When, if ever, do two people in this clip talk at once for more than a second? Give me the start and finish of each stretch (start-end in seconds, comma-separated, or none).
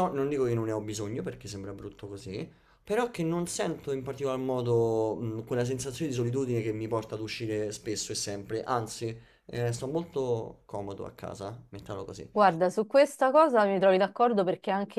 none